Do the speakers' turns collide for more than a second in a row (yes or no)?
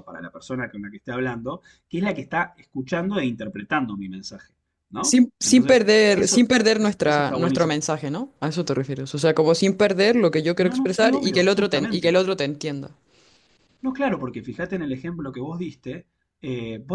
yes